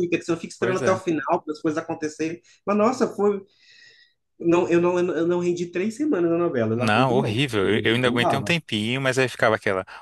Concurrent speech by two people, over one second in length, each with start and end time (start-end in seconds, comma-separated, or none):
6.8-8.6